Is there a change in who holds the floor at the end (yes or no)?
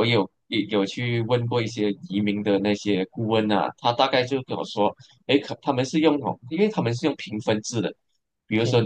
no